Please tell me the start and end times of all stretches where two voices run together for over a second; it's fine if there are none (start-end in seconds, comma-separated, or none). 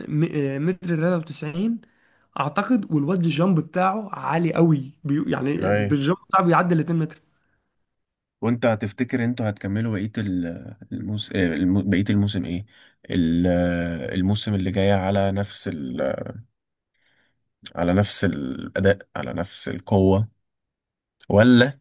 none